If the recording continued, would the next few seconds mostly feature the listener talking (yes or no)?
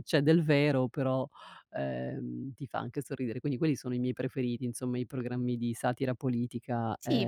yes